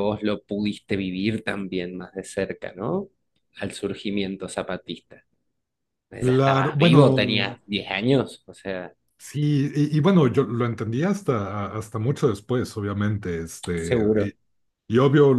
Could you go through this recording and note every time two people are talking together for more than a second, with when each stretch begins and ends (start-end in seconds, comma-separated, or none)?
6.3-7.6